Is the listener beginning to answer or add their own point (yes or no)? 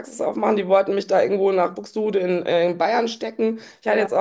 no